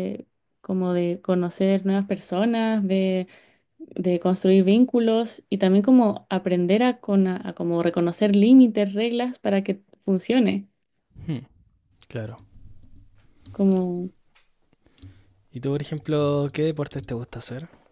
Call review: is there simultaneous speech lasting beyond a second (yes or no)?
no